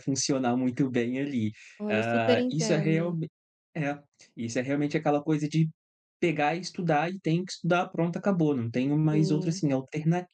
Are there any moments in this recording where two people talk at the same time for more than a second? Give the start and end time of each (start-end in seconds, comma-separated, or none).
1.9-3.2